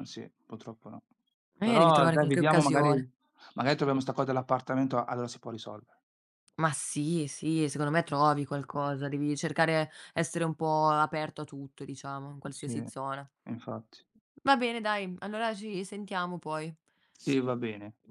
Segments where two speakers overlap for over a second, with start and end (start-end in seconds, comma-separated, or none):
1.6-2.9